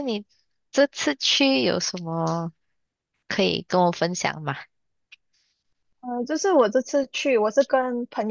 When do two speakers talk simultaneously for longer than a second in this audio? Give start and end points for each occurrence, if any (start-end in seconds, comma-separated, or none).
none